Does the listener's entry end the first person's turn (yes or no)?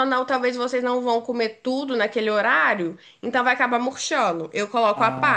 yes